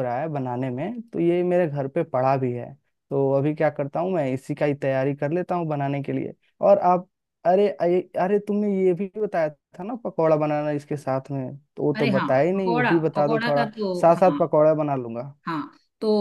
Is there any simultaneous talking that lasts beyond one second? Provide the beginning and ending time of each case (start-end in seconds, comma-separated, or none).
12.0-14.4